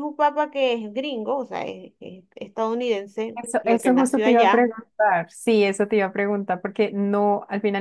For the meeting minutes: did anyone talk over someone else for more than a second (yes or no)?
yes